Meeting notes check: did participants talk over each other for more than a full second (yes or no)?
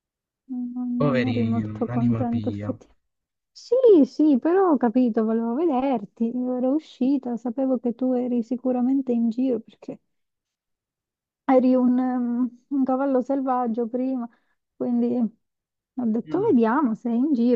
yes